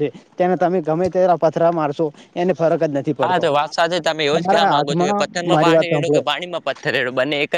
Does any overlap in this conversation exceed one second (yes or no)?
yes